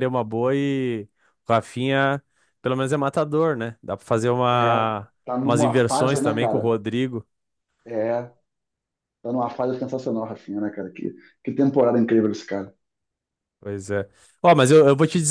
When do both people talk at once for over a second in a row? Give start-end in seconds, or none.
5.4-6.7